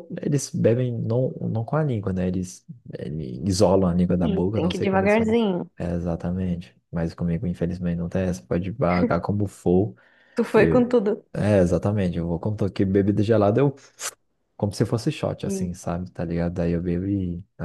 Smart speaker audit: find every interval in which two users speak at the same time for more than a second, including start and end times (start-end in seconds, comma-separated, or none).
4.2-5.4